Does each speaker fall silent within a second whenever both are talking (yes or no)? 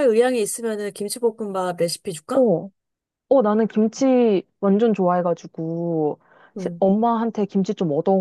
yes